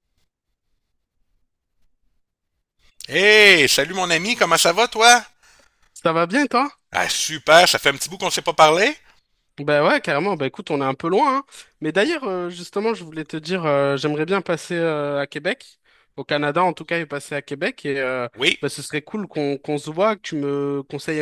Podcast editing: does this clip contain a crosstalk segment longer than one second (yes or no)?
no